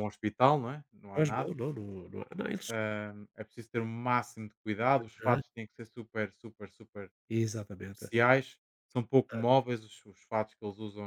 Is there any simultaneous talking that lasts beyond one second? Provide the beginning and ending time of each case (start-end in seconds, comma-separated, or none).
none